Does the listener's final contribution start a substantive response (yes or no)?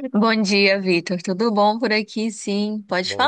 no